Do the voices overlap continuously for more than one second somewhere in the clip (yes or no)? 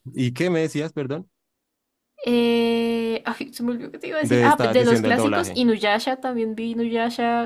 yes